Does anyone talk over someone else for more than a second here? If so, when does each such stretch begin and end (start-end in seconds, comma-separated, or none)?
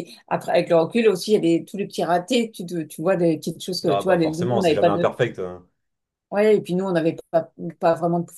3.9-5.1